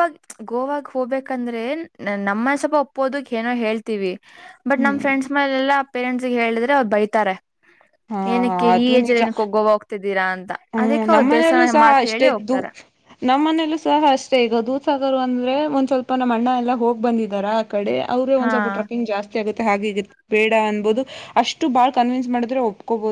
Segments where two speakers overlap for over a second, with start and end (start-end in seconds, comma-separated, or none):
10.8-12.6